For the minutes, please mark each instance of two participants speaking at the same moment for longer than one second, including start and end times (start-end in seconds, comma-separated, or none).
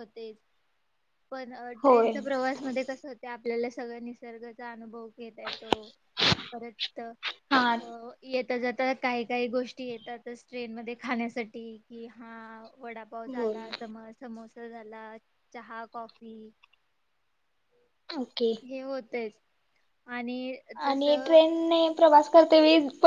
none